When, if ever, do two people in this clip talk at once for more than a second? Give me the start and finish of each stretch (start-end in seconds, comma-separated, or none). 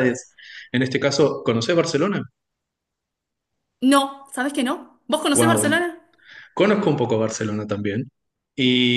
none